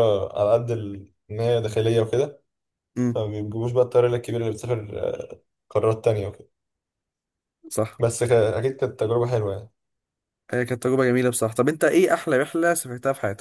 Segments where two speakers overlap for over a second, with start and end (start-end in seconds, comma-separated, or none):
none